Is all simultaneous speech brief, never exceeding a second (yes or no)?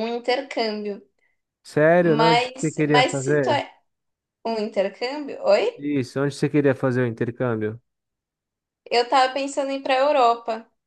no